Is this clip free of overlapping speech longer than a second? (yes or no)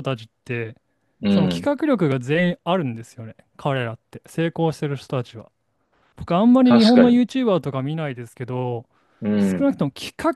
yes